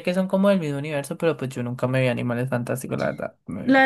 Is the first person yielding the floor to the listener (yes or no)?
yes